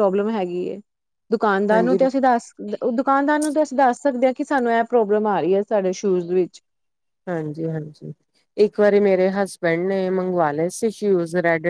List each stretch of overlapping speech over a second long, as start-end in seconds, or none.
none